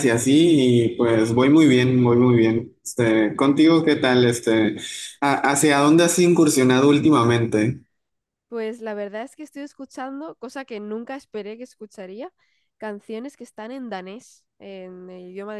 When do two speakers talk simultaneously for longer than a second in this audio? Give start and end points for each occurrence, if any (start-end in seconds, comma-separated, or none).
none